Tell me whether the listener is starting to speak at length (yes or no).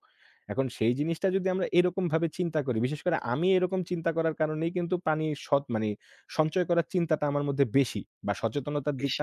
no